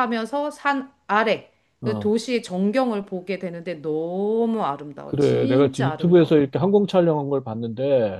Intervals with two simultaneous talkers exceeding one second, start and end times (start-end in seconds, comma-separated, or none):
5.0-6.4